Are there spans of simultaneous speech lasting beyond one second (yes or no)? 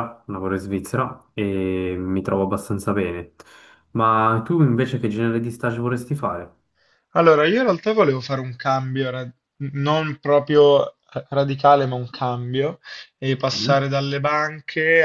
no